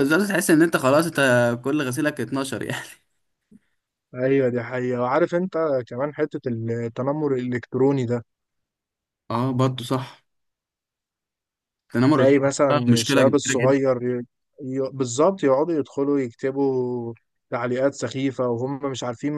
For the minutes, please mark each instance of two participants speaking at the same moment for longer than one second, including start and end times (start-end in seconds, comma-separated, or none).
12.1-13.8